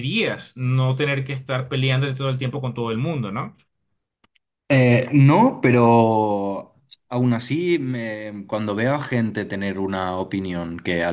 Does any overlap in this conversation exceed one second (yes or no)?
no